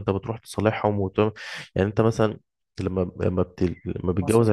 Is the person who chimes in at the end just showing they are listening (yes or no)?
yes